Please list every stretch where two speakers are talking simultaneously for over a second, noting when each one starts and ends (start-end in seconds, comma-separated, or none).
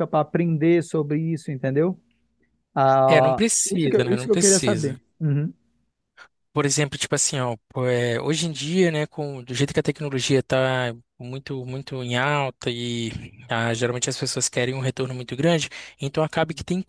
3.1-5.0